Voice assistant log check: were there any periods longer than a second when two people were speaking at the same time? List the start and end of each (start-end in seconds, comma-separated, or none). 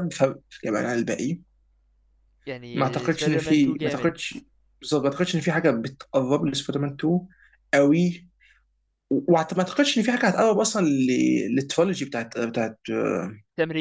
2.7-4.1